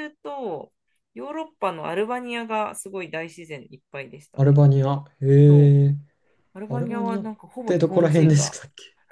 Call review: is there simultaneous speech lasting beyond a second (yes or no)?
yes